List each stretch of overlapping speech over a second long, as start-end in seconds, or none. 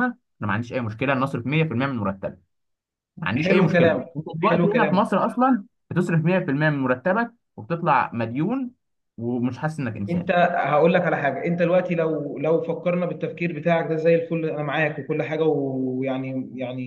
3.3-5.2